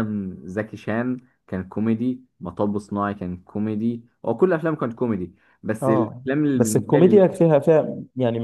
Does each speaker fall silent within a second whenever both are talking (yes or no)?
no